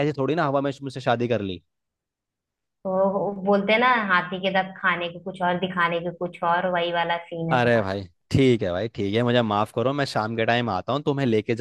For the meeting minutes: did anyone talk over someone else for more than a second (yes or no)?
no